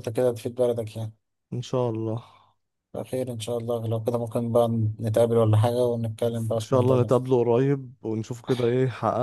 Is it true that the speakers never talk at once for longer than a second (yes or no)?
yes